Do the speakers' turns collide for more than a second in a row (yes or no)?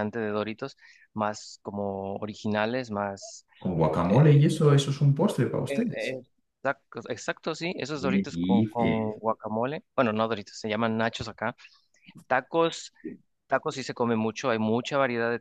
yes